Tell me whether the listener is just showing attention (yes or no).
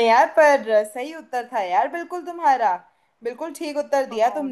yes